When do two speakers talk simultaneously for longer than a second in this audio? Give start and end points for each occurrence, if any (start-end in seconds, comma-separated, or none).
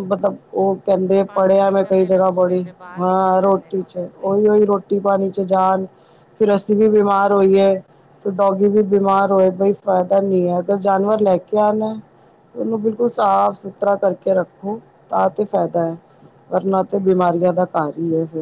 1.3-4.5